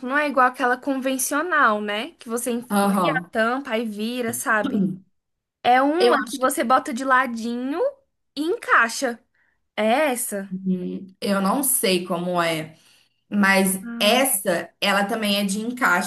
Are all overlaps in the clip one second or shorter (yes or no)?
yes